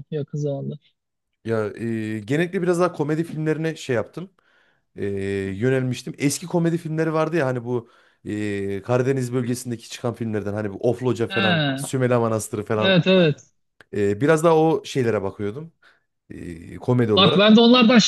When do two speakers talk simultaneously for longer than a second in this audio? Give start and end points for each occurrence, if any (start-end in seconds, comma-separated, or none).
none